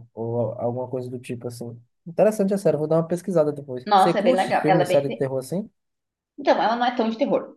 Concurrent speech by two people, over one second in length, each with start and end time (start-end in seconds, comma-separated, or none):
3.9-5.3